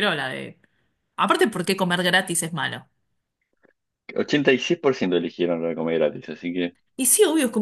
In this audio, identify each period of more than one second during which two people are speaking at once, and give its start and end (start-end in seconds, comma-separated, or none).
none